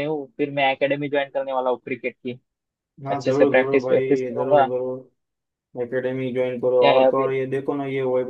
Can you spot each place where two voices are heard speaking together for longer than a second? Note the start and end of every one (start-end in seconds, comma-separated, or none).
3.1-4.7